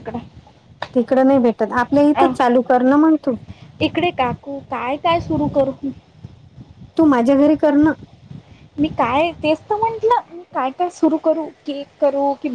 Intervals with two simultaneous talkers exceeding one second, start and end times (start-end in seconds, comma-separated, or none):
none